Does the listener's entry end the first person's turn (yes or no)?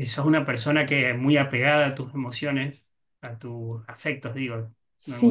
yes